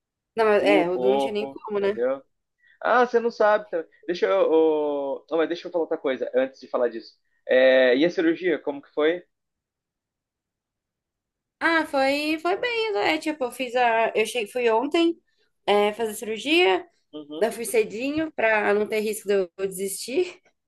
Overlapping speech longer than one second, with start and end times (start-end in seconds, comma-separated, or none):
0.6-2.0